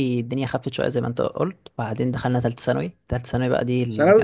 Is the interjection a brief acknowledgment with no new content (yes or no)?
no